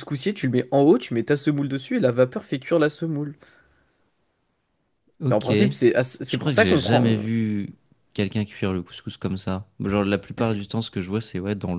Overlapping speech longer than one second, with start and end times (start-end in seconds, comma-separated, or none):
5.3-7.2